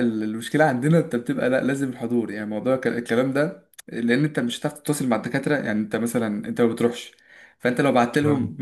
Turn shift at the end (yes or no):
no